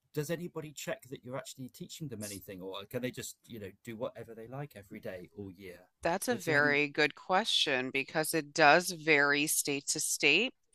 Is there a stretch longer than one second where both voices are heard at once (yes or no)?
no